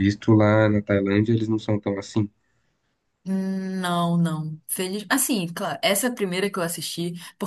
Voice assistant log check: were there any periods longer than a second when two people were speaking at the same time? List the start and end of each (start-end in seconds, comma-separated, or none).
none